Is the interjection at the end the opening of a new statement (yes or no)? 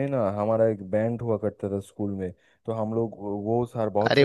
no